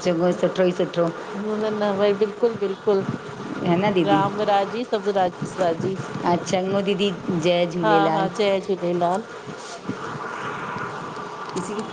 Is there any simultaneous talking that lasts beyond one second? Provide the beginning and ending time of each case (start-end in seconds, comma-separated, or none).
none